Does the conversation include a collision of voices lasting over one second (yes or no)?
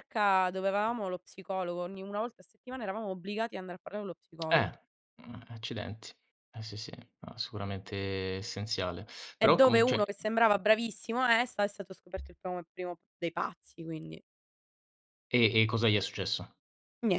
no